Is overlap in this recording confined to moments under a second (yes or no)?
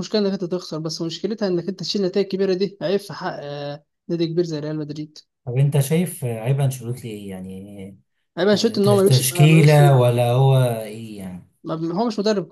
no